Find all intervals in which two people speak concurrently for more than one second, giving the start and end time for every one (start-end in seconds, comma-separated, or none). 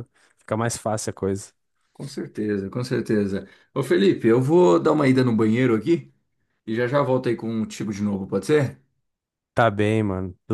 none